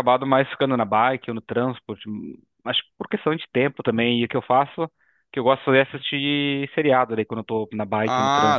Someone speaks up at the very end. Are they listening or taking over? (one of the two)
taking over